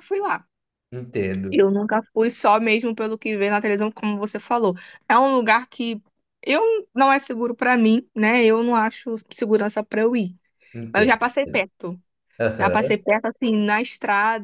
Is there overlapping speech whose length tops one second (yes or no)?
no